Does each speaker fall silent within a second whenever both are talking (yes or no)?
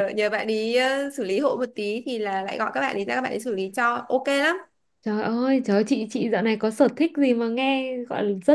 yes